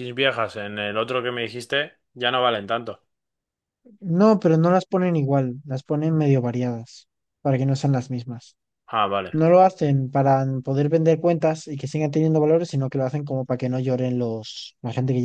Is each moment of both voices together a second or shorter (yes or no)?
yes